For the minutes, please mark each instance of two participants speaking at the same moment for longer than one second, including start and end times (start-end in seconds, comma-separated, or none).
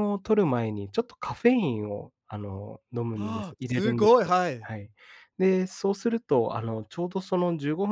3.1-4.7